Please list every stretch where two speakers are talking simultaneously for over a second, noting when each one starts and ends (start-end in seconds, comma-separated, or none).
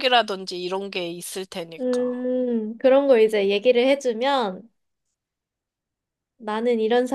none